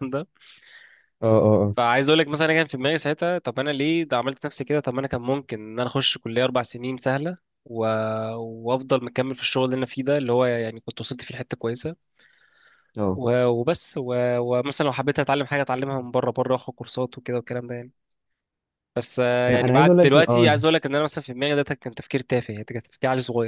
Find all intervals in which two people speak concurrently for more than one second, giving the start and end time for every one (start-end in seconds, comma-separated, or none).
19.5-20.7